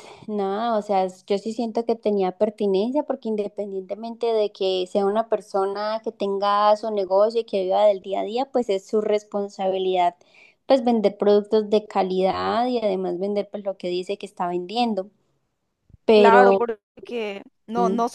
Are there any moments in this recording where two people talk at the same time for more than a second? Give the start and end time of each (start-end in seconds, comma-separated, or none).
none